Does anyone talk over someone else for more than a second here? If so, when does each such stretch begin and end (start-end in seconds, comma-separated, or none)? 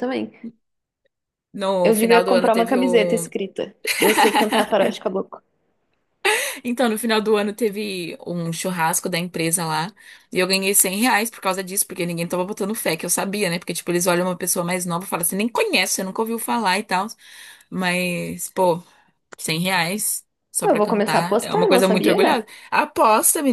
1.8-3.3, 20.7-22.2